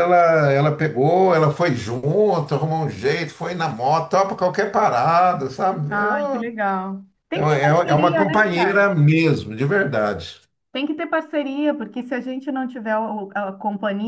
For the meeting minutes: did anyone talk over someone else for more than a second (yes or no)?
yes